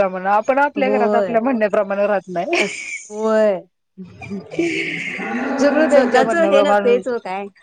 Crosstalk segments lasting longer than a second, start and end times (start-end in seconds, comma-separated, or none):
5.7-7.0